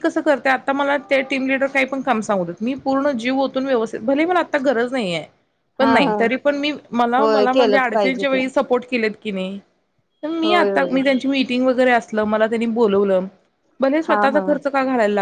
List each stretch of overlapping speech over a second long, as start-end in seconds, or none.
7.2-8.4